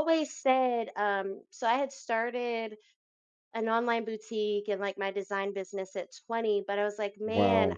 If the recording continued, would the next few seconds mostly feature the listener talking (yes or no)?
no